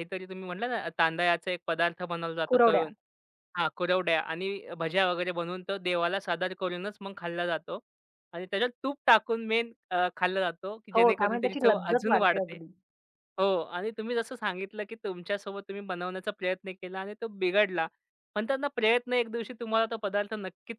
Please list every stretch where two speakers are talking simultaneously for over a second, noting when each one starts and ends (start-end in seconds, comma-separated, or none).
10.9-12.6